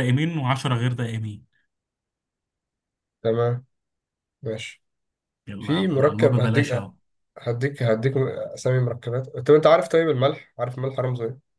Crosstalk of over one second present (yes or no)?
yes